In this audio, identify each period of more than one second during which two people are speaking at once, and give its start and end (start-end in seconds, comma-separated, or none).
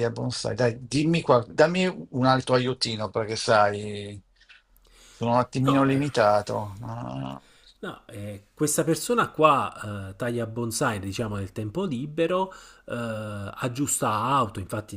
none